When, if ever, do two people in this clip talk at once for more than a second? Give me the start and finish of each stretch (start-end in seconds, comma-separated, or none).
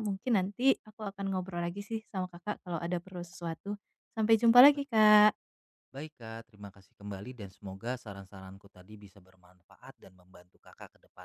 none